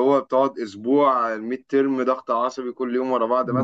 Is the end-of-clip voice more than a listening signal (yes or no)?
yes